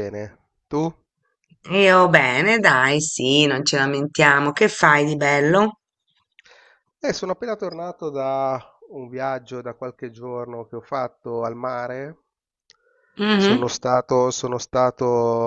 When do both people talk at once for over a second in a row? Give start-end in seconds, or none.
none